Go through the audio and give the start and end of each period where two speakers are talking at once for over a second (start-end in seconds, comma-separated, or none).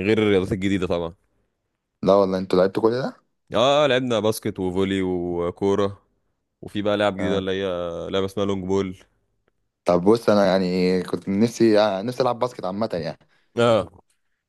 none